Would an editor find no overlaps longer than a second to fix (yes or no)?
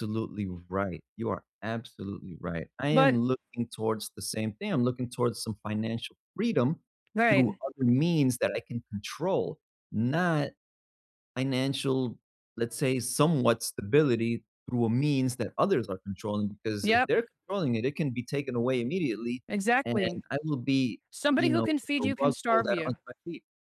no